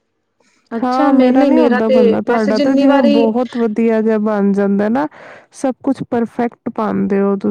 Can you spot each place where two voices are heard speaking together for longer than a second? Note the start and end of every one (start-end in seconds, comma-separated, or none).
0.8-3.3